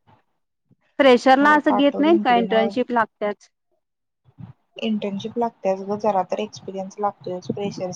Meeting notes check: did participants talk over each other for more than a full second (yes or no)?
yes